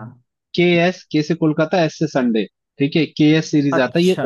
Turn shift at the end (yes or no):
no